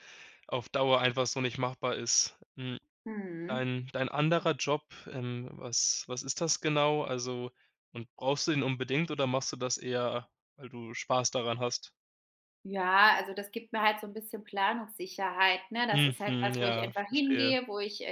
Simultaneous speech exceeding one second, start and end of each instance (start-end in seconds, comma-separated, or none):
15.9-17.6